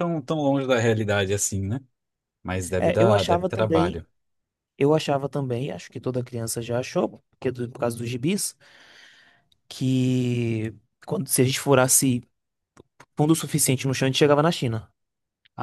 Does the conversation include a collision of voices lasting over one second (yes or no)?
yes